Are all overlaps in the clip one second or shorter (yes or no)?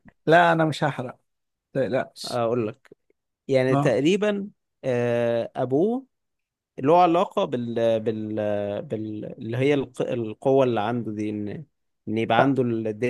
yes